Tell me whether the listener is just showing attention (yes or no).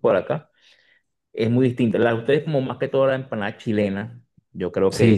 no